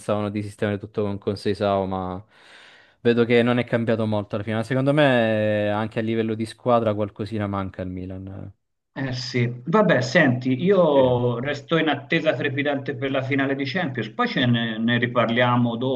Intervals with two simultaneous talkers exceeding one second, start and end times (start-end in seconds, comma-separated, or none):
none